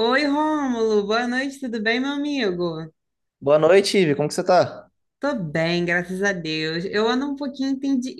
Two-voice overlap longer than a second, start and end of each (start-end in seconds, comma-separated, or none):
none